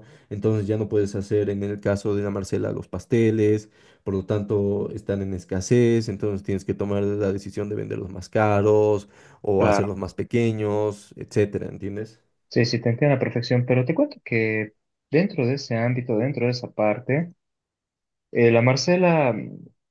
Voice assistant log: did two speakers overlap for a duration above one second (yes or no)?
no